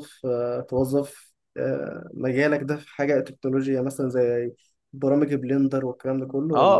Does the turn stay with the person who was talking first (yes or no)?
no